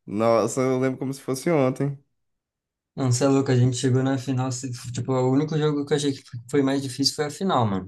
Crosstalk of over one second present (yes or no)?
no